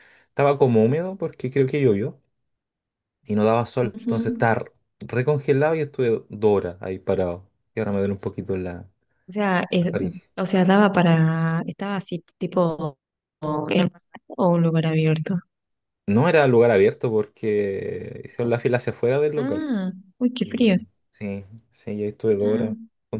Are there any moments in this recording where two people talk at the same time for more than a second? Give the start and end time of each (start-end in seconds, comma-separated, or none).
none